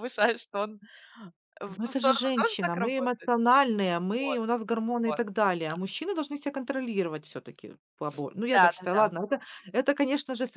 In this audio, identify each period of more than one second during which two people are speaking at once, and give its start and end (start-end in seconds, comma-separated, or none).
1.7-3.3